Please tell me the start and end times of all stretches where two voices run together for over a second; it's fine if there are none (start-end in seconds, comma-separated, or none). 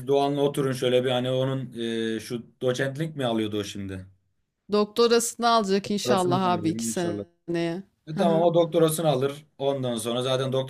5.8-7.2